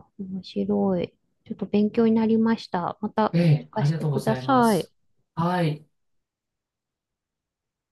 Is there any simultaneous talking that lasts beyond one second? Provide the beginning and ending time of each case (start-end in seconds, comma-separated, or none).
3.3-4.9